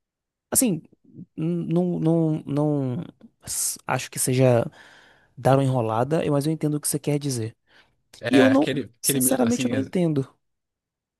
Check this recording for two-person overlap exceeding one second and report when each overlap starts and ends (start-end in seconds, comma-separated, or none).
8.3-9.9